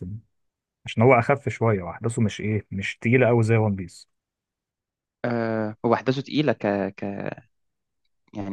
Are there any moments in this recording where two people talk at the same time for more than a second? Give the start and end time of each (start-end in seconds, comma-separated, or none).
none